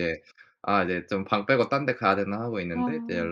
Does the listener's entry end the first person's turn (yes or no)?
no